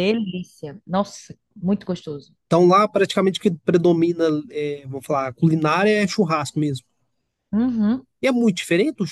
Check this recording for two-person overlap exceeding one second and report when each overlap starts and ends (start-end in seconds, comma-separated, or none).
none